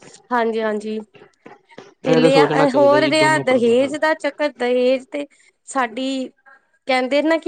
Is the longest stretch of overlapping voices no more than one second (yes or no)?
no